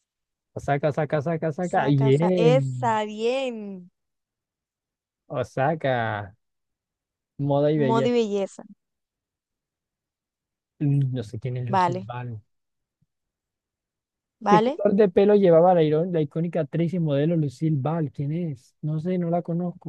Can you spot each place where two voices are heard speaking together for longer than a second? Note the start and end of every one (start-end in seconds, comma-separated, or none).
1.6-3.0